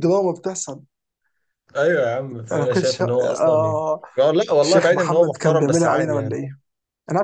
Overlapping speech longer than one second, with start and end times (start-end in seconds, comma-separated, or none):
2.5-3.8, 4.6-6.3